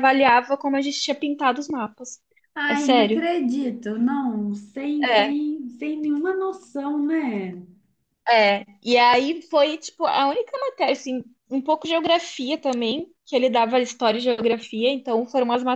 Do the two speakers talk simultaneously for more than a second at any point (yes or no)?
no